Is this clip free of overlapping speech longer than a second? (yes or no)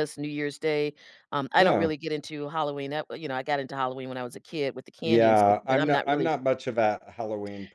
no